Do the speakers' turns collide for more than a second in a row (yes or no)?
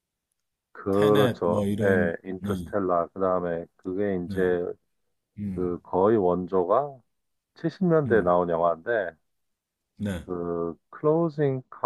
yes